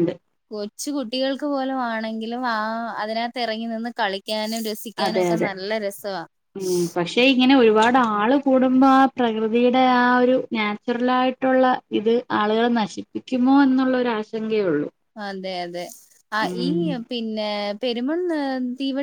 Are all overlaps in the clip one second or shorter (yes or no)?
yes